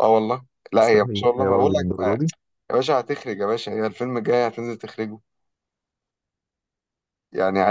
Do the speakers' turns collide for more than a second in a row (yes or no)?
yes